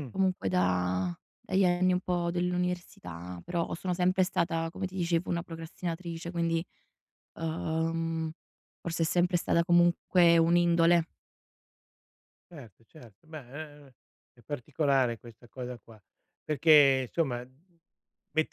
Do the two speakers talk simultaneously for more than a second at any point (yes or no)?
no